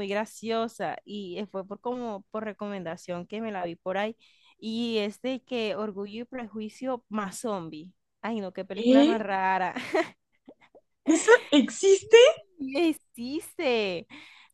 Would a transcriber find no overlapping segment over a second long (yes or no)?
yes